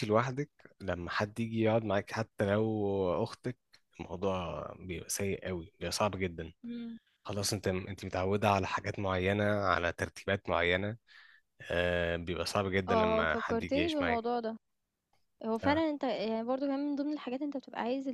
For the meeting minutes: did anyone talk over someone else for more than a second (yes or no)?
yes